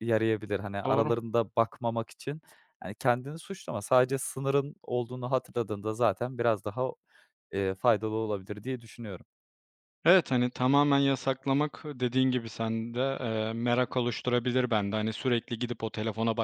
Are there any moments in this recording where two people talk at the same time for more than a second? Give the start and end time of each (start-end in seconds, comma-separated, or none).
none